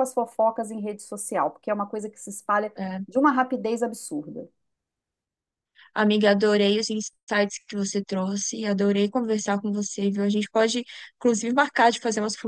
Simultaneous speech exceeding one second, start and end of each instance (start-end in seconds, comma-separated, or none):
none